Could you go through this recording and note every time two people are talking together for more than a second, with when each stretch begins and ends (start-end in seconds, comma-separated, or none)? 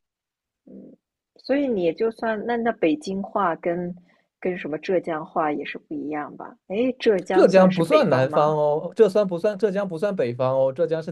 7.3-8.6